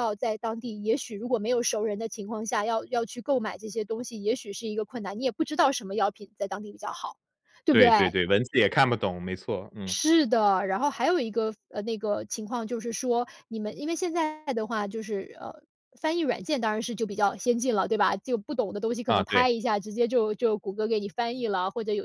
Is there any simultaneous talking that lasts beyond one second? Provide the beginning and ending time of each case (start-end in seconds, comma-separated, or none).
none